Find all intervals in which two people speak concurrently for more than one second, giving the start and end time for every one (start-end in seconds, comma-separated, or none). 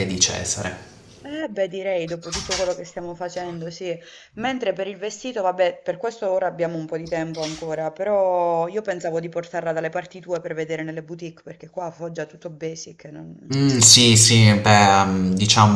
none